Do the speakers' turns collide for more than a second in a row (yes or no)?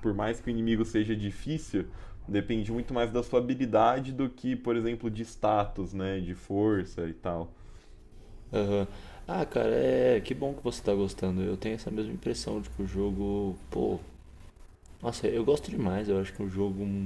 no